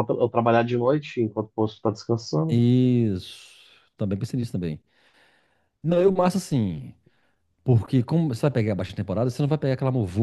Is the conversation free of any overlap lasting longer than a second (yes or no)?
yes